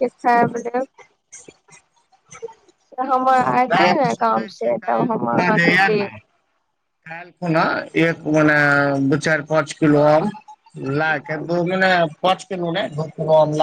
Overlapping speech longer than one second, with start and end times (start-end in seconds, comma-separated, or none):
3.7-6.1